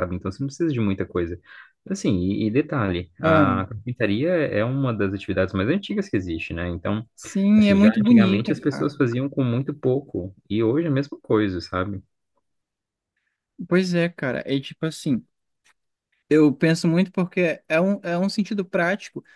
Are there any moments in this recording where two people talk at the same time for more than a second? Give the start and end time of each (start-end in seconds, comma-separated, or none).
7.6-8.9